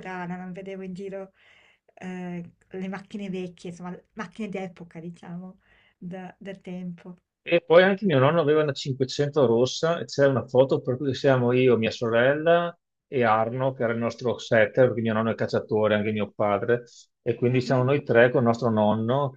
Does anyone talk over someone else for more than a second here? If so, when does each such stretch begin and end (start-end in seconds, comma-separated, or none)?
none